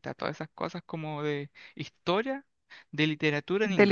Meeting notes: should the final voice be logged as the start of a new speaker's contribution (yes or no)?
yes